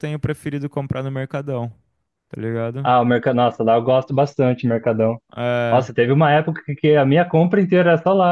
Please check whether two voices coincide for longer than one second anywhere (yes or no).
no